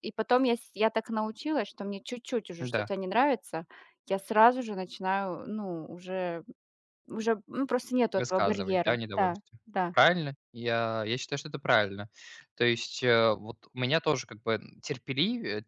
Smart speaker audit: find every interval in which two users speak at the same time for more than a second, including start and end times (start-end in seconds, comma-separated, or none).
8.2-9.9